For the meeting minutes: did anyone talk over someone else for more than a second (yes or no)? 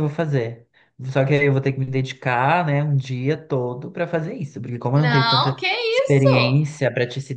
yes